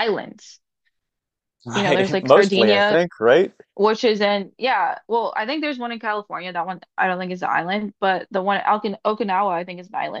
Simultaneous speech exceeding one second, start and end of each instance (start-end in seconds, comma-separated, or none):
1.7-3.0